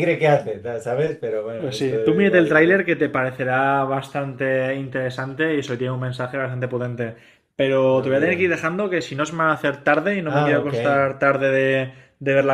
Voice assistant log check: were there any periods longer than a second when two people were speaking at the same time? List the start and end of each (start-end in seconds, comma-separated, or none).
1.6-2.9